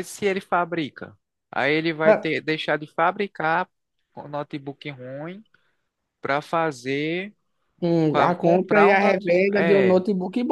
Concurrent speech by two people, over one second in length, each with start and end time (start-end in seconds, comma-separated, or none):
8.1-10.0